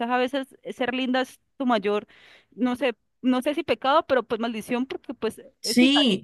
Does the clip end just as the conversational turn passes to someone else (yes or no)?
yes